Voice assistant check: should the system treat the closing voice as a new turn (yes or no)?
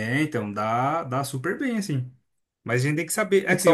no